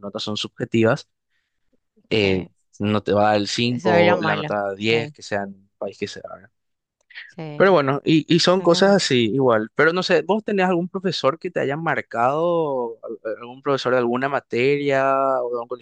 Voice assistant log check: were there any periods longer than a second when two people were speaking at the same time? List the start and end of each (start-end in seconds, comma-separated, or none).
3.6-5.1